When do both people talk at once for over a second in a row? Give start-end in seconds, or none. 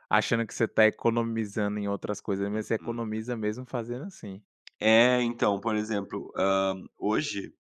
none